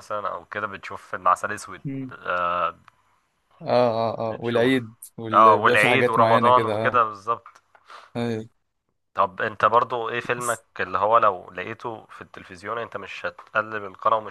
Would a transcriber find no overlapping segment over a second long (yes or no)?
no